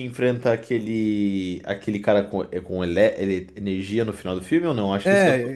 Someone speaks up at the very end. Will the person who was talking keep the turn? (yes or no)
no